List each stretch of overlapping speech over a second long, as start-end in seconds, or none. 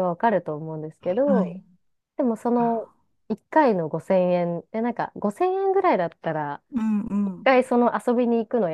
none